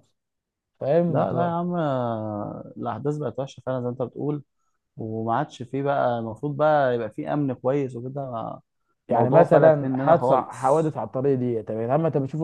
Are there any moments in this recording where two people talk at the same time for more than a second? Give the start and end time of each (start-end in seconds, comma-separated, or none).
9.1-10.8